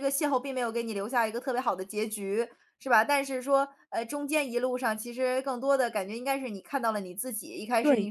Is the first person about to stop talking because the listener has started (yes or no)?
no